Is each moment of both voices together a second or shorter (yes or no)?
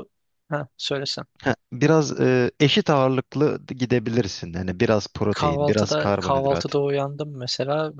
no